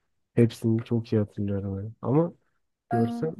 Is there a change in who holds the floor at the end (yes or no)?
no